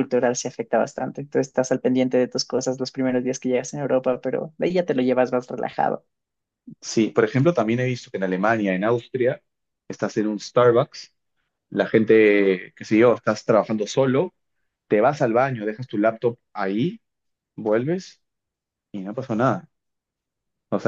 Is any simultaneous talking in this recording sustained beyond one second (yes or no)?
no